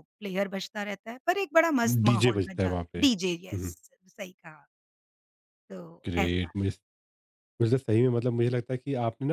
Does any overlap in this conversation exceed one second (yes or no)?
yes